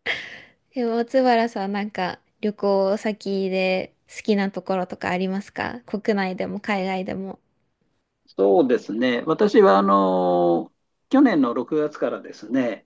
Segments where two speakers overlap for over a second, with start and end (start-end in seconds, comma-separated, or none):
none